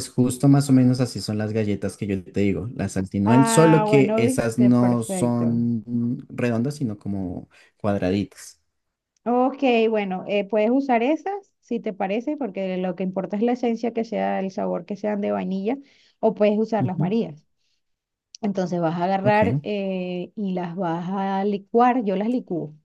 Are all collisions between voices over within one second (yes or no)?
no